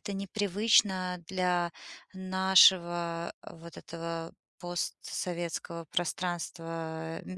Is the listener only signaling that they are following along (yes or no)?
yes